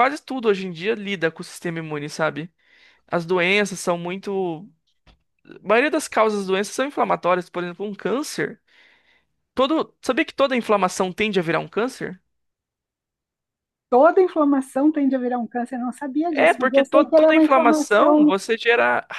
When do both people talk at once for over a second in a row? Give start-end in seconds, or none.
16.3-18.3